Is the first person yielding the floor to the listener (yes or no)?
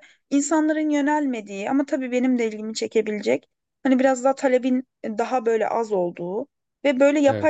no